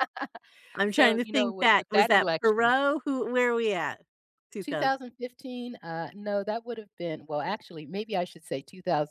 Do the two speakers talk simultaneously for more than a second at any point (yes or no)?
yes